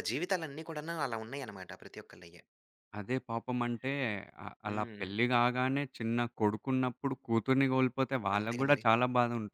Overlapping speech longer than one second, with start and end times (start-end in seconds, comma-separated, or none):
none